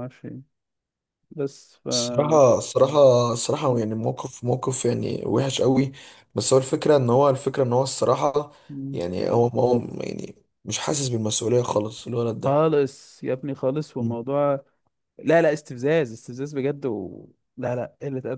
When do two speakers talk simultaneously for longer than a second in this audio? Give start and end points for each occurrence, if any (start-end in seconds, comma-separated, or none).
none